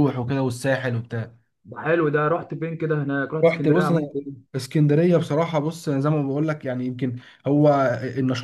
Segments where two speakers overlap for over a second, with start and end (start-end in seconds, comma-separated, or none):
none